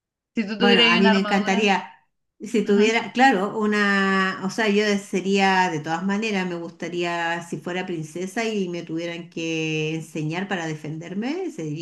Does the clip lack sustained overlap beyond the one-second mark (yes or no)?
no